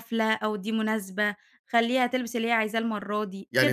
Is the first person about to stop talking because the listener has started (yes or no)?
yes